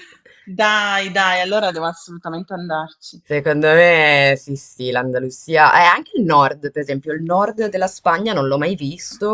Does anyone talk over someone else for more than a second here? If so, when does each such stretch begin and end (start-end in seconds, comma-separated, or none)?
none